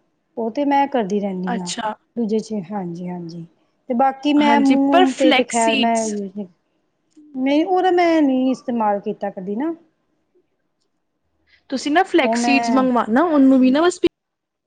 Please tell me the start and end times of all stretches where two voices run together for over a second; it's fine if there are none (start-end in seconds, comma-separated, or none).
4.5-6.1